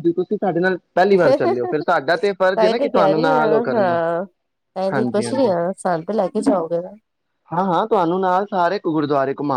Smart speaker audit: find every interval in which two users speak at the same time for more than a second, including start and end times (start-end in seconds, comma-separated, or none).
2.5-4.0